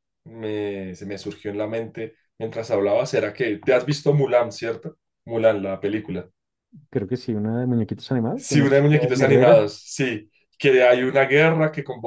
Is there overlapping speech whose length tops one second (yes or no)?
yes